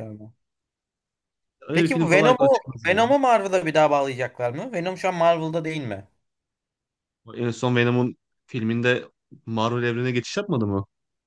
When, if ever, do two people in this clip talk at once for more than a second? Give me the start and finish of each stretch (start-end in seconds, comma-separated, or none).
1.7-3.1